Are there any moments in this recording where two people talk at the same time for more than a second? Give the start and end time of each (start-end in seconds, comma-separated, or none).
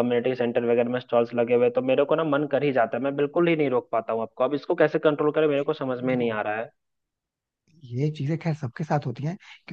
none